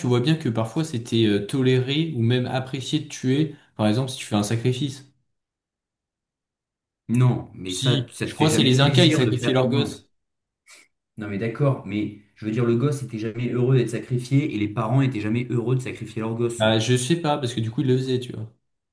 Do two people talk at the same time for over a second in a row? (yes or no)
yes